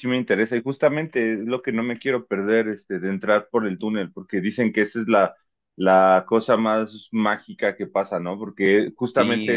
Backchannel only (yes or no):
yes